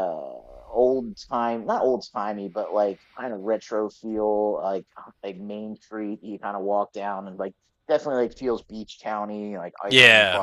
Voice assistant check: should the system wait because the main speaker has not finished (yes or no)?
no